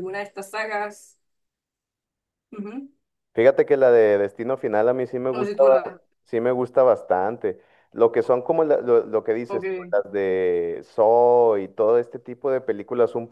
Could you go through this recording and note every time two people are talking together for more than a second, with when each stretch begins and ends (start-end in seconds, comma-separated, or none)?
none